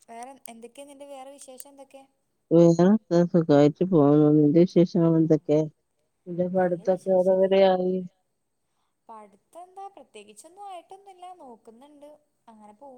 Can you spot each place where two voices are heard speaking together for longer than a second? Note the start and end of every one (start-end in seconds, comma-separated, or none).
none